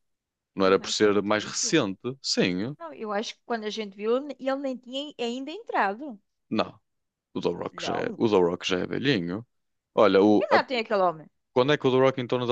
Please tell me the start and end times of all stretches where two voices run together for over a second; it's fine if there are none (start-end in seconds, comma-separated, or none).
0.6-1.9